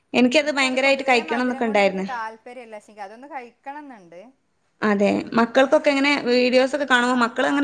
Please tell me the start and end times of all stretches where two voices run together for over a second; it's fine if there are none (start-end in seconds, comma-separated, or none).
0.6-2.1